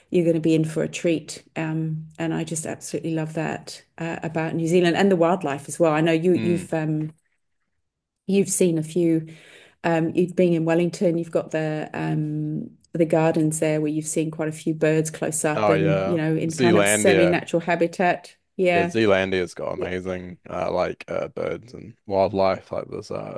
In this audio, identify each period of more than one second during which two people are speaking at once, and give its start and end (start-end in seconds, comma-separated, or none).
15.6-17.4